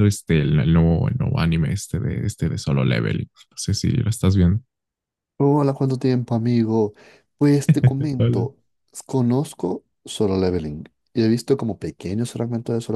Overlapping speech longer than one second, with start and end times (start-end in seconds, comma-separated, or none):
none